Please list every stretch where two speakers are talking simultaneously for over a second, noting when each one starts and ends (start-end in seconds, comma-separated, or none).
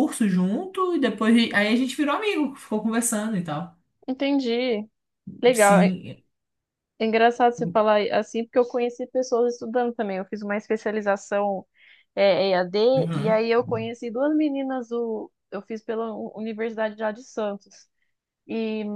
none